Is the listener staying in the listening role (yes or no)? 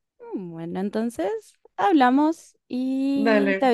yes